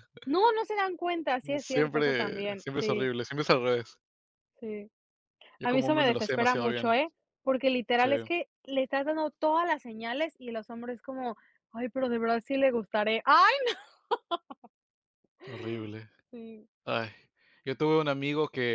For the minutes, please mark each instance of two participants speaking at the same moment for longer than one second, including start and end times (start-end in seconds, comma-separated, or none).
1.6-3.1, 5.6-6.9